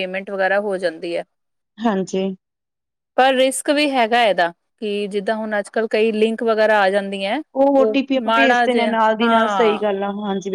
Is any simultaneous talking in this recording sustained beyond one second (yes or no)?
yes